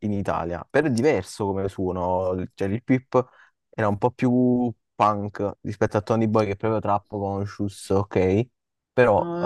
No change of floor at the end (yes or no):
no